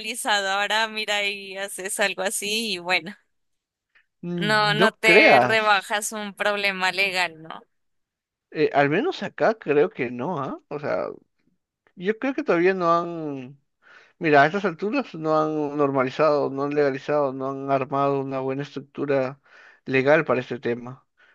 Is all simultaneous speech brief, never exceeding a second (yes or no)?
no